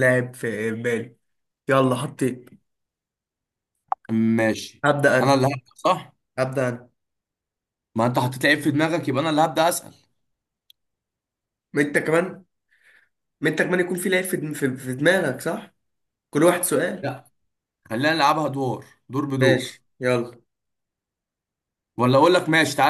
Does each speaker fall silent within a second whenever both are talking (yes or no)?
yes